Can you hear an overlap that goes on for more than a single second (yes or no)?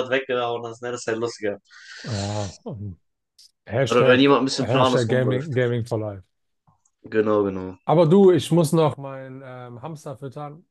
yes